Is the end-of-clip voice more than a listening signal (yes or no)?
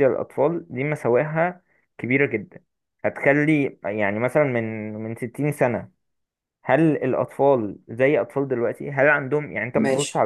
no